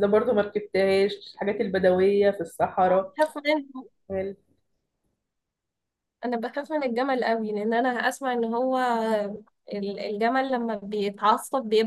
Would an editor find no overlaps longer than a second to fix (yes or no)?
yes